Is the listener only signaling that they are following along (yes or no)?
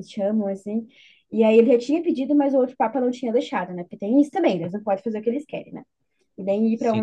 no